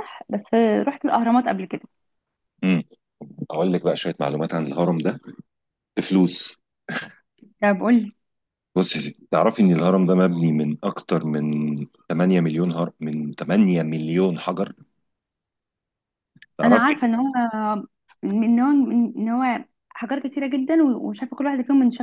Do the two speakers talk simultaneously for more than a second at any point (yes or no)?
no